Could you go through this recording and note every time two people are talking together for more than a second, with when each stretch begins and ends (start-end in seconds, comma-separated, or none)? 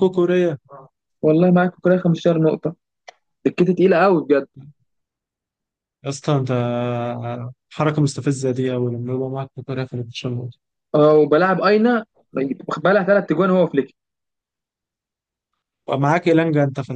none